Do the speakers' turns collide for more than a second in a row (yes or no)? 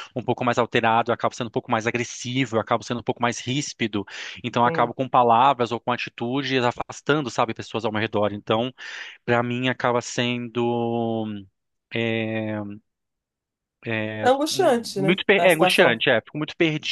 yes